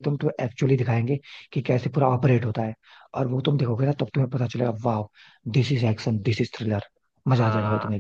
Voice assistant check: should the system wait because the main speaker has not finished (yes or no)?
no